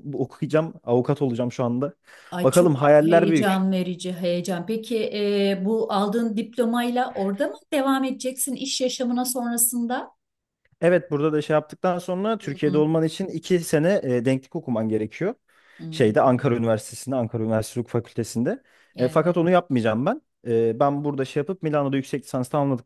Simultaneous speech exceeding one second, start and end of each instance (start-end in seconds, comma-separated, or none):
2.4-3.8